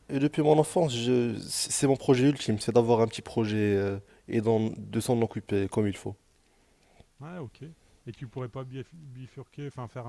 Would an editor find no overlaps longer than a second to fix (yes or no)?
yes